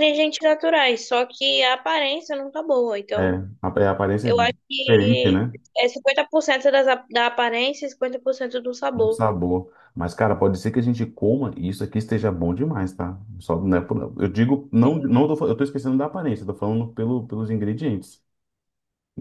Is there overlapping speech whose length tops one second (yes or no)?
yes